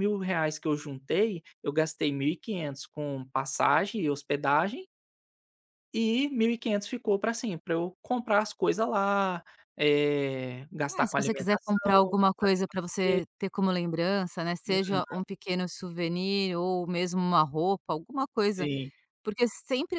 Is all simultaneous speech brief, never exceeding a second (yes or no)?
no